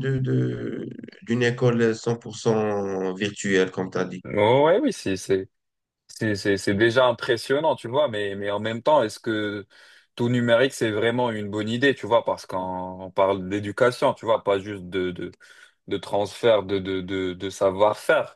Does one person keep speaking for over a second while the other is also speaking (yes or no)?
no